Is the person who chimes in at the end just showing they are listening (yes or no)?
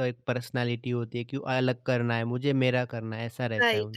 no